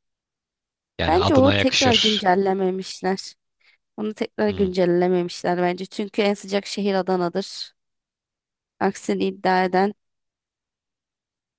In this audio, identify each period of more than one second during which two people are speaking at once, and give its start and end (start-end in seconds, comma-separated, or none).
1.1-2.3